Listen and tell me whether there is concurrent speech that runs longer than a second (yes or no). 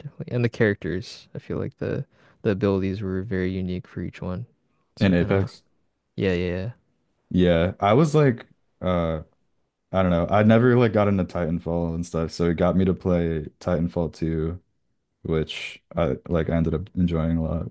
no